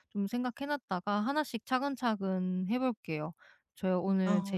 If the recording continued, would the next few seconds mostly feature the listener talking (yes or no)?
no